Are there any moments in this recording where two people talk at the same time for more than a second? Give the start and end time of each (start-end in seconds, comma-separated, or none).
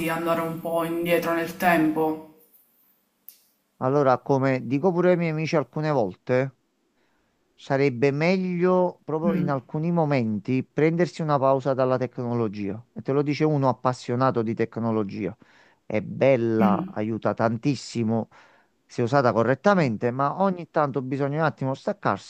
none